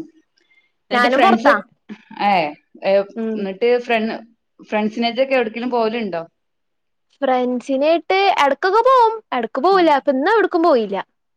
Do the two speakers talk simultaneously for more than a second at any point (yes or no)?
no